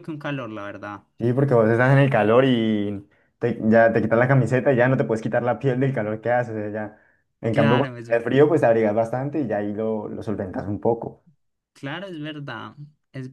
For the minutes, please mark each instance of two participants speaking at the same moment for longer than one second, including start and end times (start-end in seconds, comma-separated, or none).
none